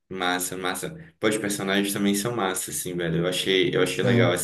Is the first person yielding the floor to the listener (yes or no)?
no